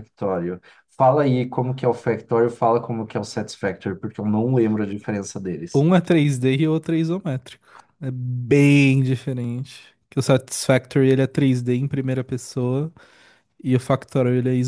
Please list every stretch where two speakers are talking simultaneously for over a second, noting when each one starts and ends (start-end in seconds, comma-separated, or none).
none